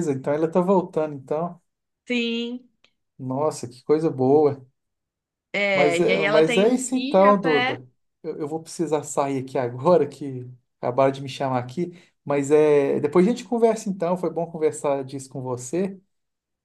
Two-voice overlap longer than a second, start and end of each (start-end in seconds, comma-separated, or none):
5.7-7.8